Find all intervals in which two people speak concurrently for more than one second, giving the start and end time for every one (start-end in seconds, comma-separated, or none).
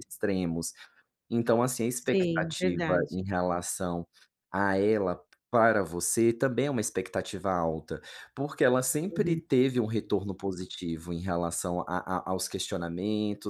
1.9-3.2